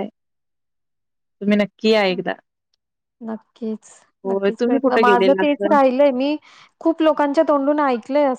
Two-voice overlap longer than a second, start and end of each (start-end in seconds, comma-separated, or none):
4.3-5.8